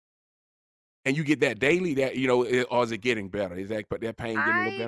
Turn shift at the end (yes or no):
yes